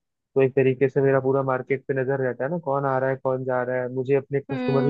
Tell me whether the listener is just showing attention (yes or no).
no